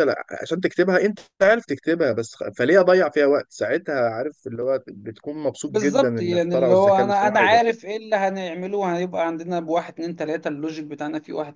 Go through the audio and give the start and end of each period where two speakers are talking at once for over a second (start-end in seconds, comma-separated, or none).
5.7-7.6